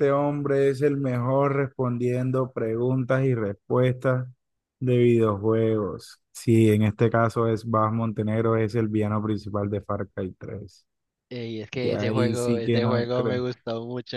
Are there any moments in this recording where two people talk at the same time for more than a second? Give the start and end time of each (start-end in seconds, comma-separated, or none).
11.7-13.4